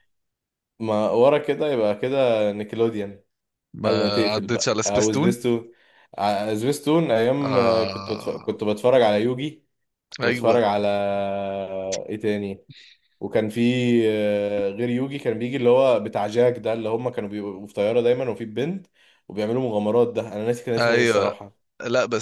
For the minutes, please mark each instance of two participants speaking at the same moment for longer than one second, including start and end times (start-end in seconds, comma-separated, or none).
3.9-5.3, 7.4-8.6